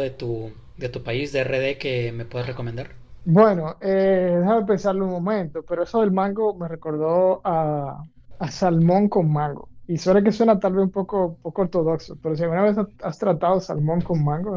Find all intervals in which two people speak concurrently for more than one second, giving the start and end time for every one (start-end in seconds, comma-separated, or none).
none